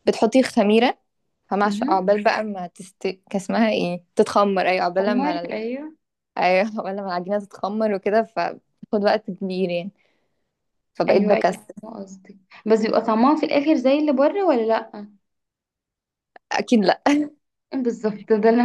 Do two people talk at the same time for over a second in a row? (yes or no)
no